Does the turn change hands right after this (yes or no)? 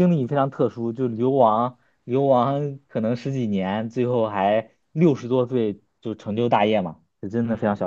yes